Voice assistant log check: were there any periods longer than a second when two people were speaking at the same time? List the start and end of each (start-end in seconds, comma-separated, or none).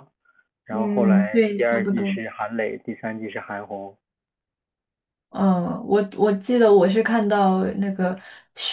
0.7-2.2